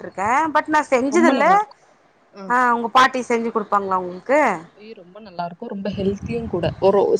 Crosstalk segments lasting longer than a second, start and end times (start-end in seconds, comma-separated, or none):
none